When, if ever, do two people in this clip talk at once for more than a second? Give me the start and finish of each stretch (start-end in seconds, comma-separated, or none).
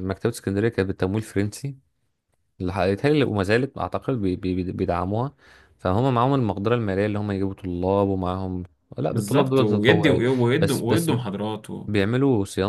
9.1-11.1